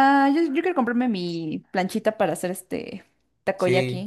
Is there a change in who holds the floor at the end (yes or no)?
yes